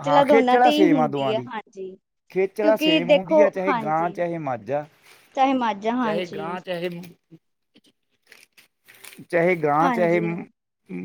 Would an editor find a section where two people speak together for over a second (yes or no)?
yes